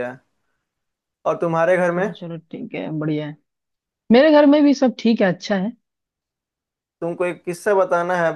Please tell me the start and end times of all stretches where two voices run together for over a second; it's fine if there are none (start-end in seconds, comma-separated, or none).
none